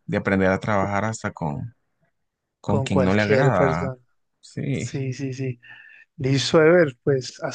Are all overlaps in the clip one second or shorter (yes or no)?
no